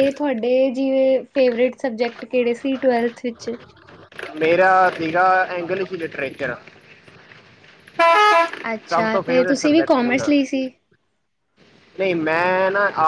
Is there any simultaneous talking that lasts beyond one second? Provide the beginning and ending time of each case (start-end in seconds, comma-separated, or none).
8.9-10.3